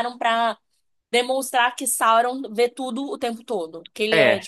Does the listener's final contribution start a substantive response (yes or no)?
yes